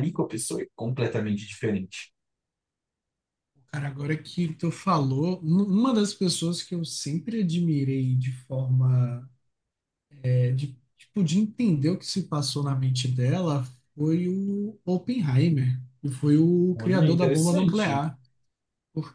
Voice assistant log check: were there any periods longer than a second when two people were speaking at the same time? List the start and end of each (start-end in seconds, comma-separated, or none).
16.7-18.1